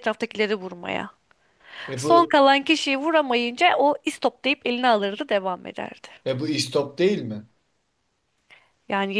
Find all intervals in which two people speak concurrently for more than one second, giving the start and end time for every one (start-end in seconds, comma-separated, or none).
none